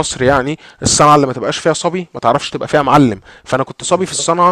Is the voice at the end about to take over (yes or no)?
no